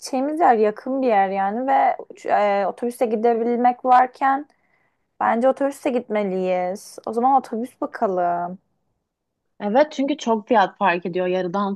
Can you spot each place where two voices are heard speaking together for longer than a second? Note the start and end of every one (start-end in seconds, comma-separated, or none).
none